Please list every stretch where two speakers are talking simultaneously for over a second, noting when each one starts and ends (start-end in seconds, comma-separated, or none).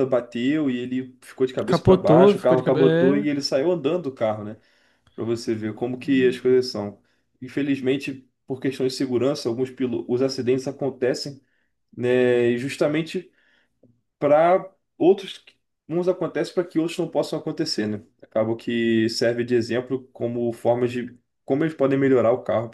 1.7-3.3